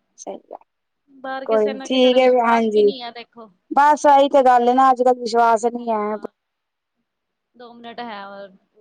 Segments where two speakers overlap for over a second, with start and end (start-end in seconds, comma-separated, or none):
1.4-2.9